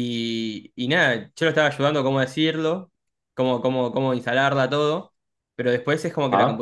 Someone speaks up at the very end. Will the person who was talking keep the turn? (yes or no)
yes